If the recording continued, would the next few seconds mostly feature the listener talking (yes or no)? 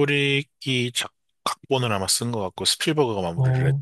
yes